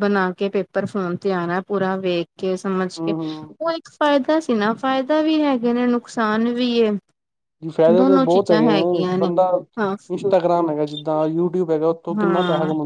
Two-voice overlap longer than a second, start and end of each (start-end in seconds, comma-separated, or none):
none